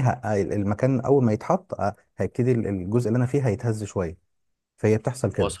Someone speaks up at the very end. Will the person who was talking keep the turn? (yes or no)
yes